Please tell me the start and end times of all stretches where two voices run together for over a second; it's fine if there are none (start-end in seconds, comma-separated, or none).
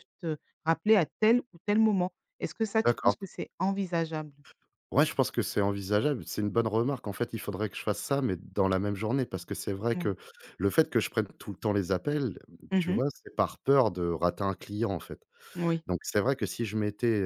none